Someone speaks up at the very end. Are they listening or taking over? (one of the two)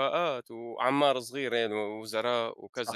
listening